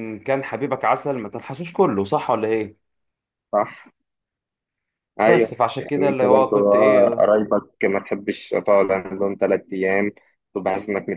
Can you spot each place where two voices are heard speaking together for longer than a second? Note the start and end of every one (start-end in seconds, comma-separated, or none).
5.2-7.3